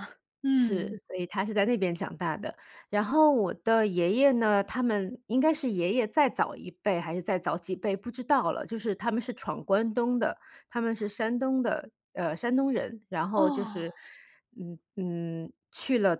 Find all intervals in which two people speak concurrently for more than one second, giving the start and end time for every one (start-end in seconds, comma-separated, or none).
none